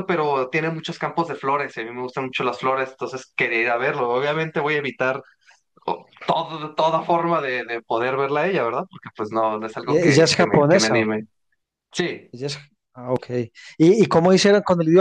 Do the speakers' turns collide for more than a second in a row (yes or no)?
yes